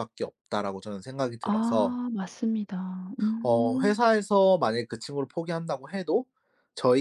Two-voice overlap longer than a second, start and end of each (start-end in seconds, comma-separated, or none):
none